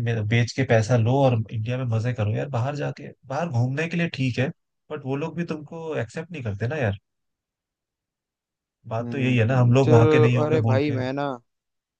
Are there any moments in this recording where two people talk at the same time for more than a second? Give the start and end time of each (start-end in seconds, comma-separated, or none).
9.0-11.0